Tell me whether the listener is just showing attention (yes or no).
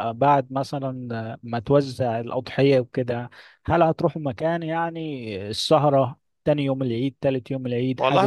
no